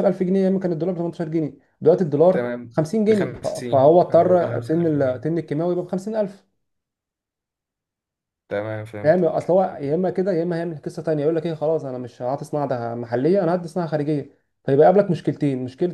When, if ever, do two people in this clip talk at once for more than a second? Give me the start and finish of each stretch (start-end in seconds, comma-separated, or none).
2.3-5.3